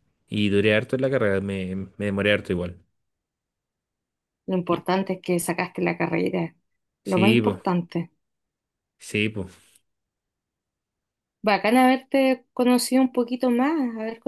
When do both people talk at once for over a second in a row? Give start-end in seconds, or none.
none